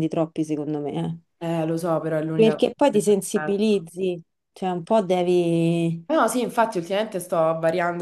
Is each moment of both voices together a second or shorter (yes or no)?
no